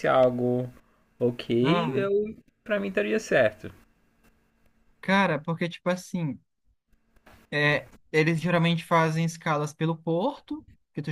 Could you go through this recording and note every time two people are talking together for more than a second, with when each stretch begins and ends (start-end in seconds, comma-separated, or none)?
none